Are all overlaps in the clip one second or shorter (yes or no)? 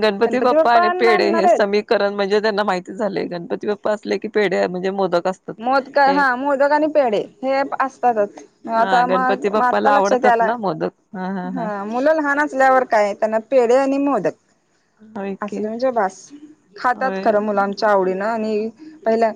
no